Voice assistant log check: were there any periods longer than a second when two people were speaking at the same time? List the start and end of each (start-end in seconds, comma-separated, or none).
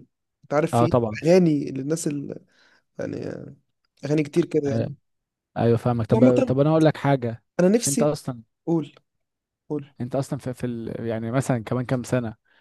none